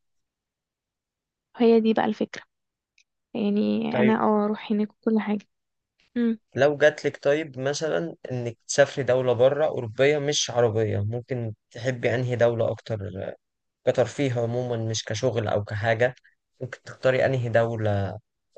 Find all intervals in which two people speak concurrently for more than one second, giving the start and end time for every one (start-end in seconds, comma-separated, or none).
none